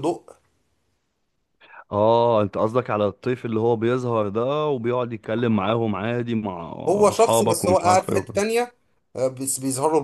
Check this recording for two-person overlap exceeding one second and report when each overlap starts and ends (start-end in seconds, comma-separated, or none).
7.1-8.4